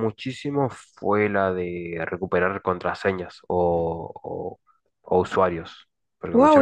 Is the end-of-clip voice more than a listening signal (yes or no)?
yes